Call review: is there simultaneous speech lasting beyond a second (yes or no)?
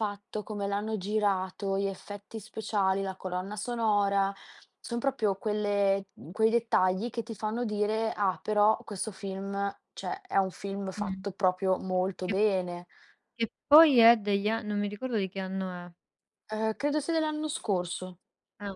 no